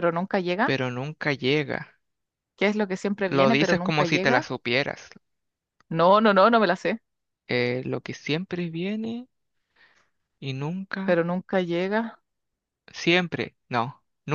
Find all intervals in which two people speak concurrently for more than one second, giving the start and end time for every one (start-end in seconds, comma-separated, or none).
3.3-4.5